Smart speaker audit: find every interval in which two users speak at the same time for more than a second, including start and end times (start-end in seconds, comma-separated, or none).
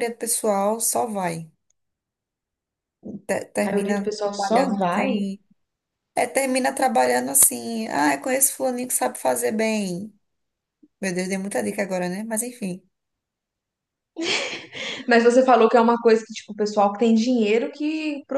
3.6-5.1